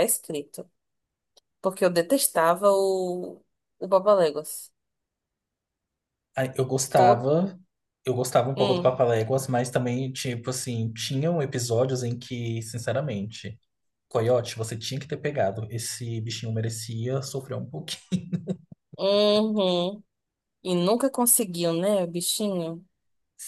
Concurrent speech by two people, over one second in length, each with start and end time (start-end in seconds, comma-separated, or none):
none